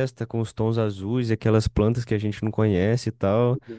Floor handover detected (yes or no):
yes